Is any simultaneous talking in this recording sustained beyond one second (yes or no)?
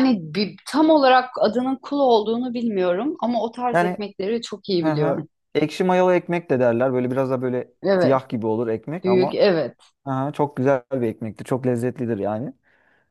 no